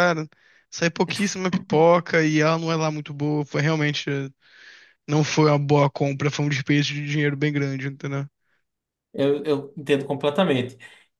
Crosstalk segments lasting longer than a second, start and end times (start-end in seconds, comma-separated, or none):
none